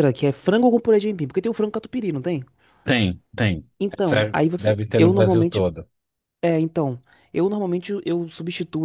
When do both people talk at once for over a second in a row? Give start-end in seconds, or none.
3.8-5.7